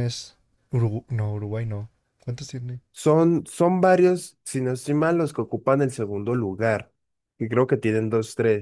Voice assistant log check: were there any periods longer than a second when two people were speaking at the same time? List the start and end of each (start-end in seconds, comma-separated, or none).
none